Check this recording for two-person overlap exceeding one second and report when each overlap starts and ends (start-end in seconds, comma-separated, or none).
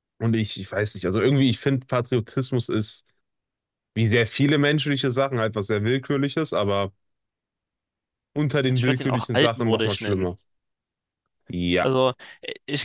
8.7-10.3